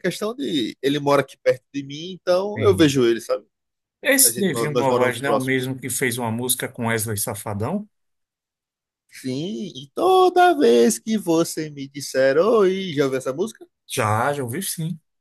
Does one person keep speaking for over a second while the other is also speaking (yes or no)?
yes